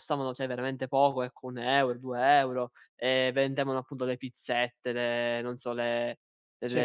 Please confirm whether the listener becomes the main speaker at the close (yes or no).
no